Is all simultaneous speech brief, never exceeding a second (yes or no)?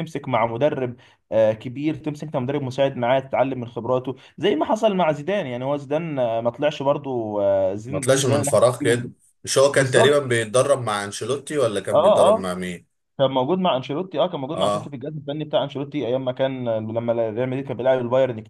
no